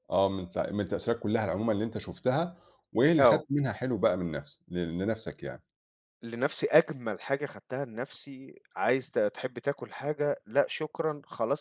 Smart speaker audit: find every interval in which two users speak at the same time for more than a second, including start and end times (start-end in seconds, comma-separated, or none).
none